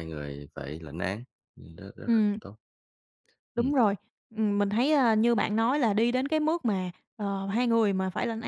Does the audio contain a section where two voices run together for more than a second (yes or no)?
no